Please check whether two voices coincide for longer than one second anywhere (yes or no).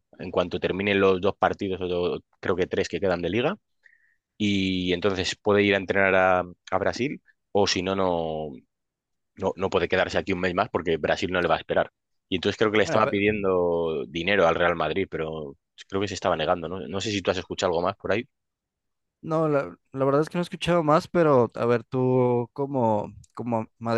no